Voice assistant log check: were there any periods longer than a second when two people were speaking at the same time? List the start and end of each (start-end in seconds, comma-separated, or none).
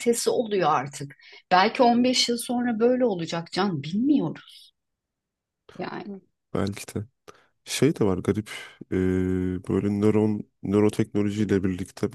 none